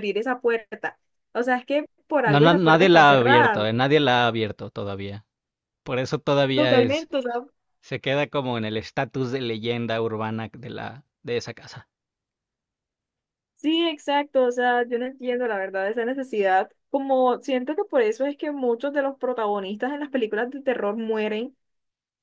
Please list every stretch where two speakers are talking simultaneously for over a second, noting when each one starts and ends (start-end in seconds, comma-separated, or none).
2.2-3.6